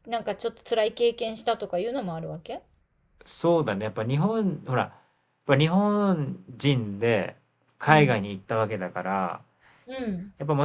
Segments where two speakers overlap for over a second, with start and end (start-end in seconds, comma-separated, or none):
none